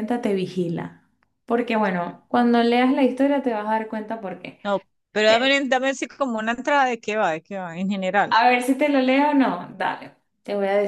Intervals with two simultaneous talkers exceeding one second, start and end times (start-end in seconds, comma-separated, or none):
none